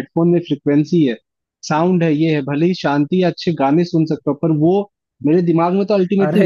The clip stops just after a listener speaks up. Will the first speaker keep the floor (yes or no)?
yes